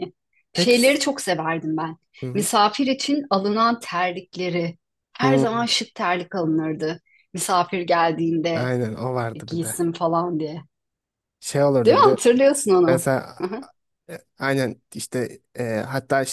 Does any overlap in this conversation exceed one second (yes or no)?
no